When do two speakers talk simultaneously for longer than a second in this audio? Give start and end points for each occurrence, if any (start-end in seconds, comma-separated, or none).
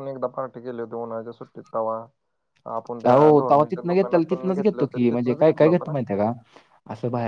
3.1-5.9